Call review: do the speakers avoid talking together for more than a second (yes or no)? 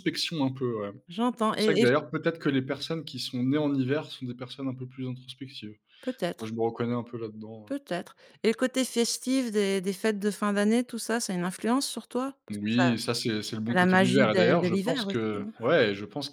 no